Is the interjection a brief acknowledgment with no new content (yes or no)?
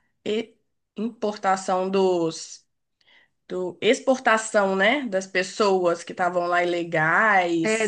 no